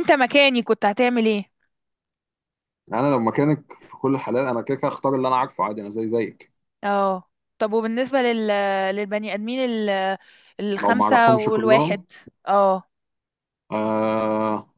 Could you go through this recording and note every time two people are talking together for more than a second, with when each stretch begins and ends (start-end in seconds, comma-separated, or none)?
10.8-12.0